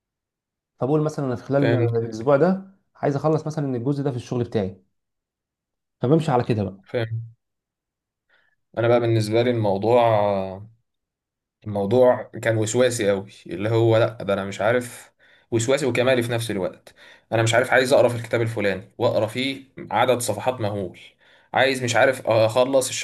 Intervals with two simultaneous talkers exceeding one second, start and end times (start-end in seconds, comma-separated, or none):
none